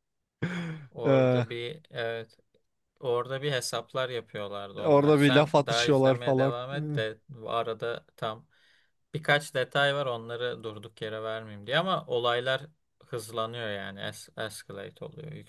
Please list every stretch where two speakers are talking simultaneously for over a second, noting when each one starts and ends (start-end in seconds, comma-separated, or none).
4.8-6.8